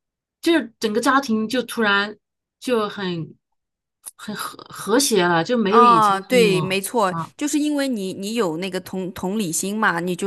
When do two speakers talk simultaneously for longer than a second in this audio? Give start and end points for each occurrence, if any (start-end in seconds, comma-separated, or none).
5.7-7.3